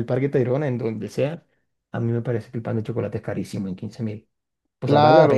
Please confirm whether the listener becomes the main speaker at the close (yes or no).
yes